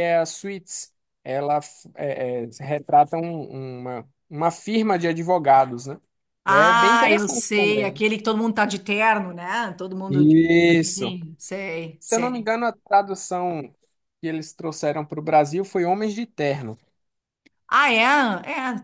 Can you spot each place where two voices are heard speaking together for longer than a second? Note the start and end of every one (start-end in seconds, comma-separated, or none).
6.5-8.0